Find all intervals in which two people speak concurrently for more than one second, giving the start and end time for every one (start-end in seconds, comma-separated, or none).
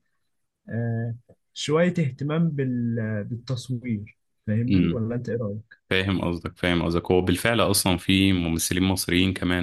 none